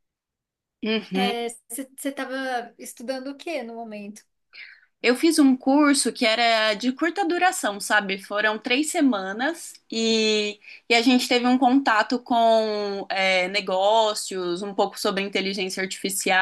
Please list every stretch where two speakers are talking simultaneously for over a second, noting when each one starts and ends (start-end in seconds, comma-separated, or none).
none